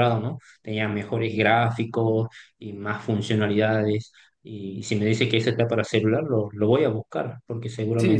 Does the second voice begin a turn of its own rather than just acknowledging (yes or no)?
yes